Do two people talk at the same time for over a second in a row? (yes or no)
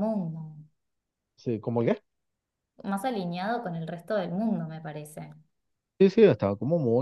no